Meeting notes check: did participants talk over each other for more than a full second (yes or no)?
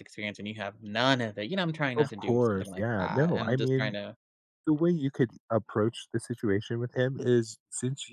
yes